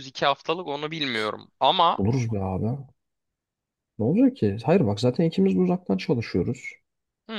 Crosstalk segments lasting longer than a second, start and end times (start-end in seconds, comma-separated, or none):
none